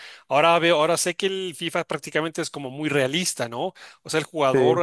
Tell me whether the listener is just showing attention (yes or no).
yes